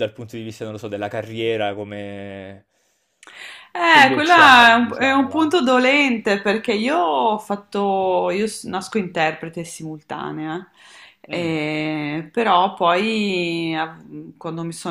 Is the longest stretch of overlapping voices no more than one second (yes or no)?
no